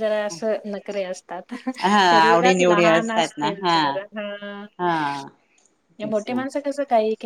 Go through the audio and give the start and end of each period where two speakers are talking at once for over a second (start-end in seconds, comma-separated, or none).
2.1-3.8